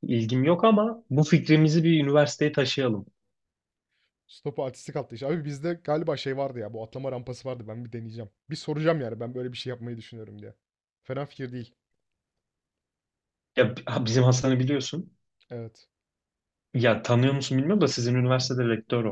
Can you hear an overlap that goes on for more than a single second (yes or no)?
no